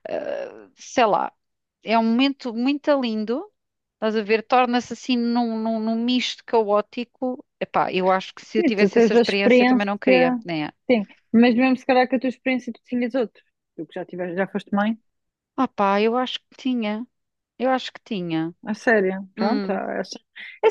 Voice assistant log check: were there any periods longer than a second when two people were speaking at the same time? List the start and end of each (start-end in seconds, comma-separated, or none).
8.6-9.9